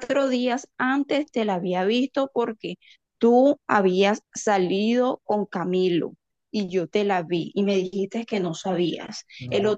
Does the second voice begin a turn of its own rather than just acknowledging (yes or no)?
no